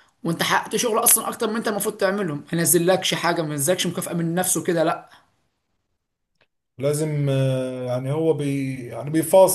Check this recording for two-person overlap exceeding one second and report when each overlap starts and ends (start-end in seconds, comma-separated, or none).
none